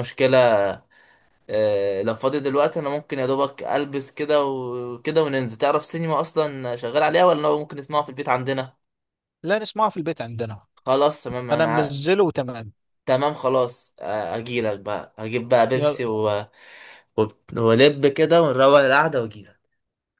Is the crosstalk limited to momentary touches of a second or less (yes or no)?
yes